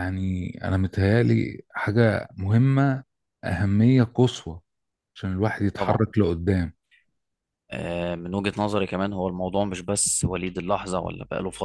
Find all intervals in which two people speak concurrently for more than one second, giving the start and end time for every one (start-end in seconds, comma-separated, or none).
none